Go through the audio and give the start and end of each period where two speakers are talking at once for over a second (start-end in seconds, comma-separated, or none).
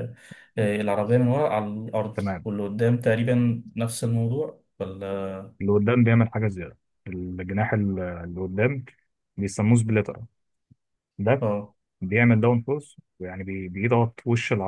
none